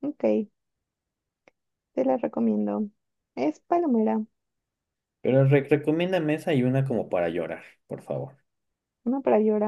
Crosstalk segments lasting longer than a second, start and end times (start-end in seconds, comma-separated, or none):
none